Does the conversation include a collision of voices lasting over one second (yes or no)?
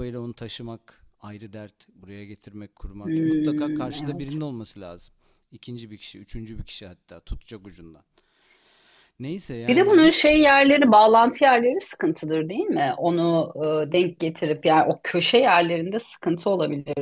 yes